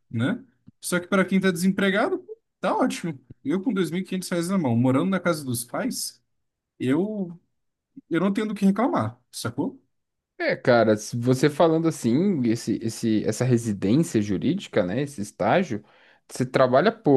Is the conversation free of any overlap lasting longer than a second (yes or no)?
yes